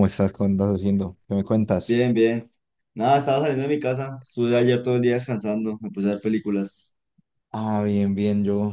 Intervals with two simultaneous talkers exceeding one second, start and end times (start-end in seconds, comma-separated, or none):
none